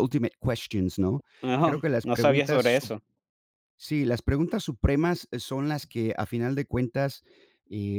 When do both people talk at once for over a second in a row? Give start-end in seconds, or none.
1.6-2.9